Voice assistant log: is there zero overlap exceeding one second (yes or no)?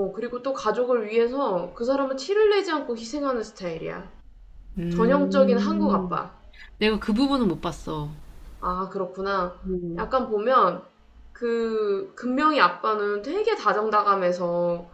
no